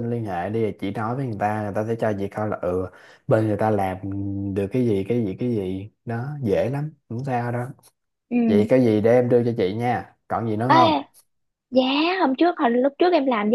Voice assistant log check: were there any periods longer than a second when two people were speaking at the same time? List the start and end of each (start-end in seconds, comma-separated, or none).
none